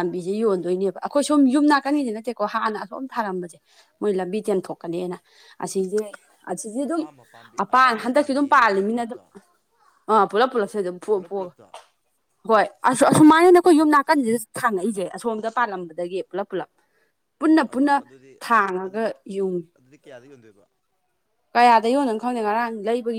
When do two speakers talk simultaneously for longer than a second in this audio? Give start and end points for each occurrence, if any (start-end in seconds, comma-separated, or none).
7.6-9.2